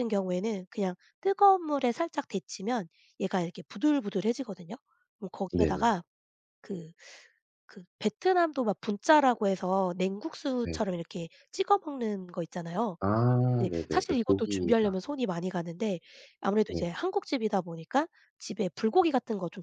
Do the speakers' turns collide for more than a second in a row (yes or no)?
yes